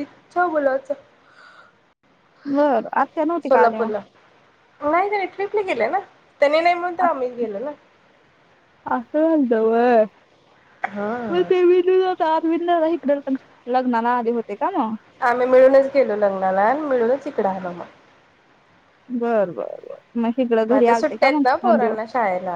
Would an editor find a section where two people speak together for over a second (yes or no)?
yes